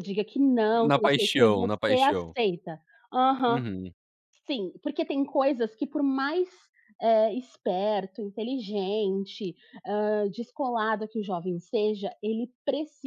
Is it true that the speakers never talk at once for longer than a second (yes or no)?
no